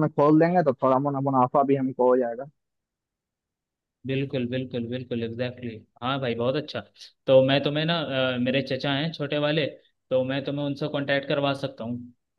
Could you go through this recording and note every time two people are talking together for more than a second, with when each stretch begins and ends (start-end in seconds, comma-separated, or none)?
none